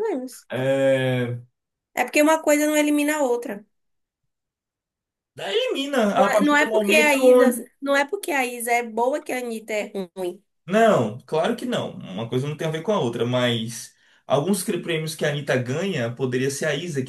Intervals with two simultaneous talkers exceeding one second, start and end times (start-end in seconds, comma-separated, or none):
6.1-7.7